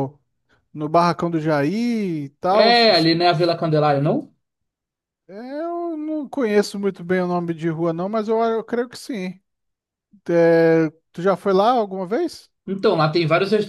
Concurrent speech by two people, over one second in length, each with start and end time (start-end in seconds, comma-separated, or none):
none